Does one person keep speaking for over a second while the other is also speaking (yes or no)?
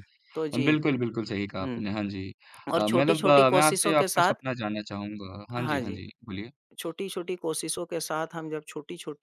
yes